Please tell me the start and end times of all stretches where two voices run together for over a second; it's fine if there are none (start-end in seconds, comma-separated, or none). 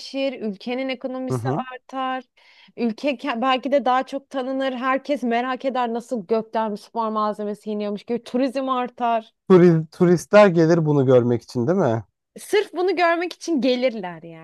none